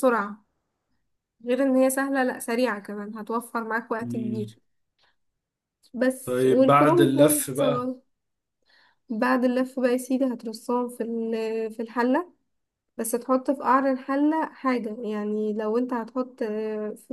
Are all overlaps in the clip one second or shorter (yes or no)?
no